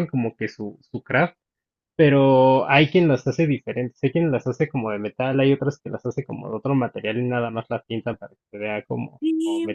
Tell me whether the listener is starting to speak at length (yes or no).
no